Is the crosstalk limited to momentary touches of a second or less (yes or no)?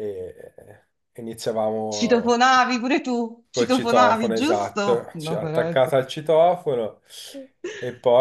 no